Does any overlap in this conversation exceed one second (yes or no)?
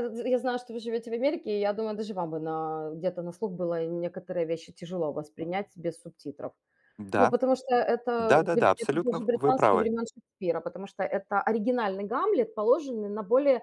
yes